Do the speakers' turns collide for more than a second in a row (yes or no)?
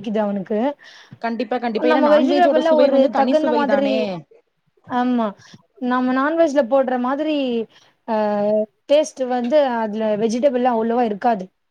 yes